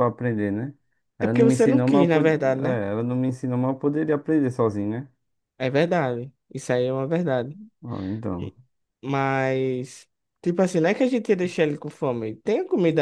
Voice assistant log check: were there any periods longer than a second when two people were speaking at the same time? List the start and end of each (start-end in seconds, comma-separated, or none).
1.2-2.8